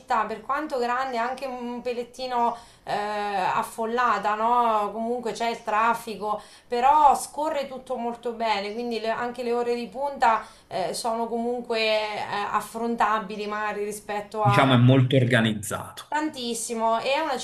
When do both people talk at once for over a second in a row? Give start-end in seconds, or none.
none